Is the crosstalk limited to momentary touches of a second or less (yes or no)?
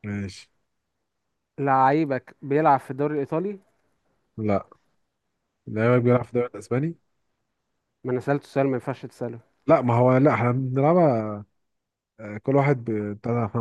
yes